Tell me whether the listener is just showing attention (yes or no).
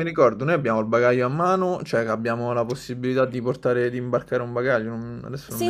no